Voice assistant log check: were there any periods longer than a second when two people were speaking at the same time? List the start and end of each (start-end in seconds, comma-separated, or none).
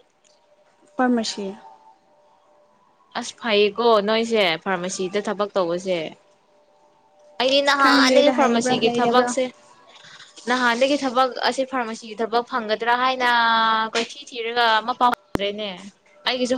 7.5-9.3